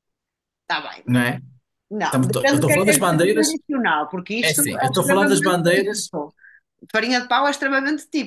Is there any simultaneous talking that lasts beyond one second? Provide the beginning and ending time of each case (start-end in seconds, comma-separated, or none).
2.0-3.6, 4.4-6.1